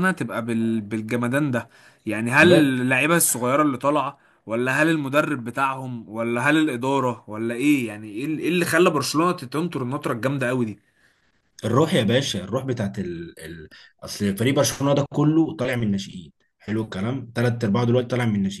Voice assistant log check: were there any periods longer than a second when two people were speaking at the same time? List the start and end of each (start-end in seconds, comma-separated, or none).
none